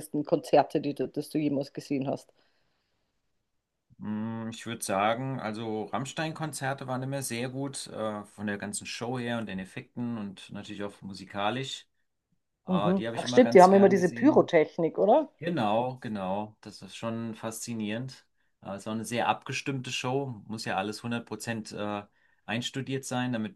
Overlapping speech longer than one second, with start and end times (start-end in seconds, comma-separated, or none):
12.7-14.5